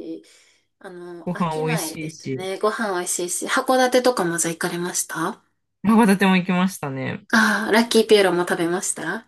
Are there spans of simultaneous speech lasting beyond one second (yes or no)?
yes